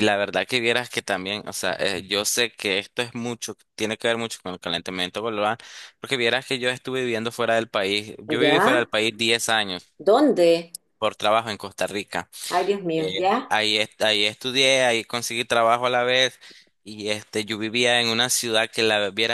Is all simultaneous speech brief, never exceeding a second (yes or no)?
yes